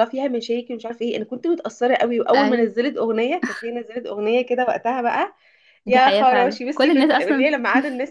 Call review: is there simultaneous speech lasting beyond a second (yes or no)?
yes